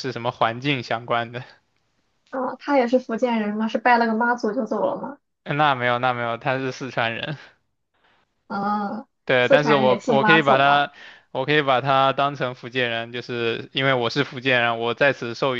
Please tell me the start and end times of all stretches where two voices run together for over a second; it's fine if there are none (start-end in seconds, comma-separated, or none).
9.2-10.8